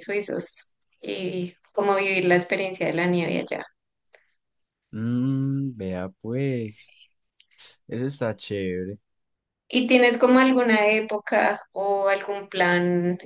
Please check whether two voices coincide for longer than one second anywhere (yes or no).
no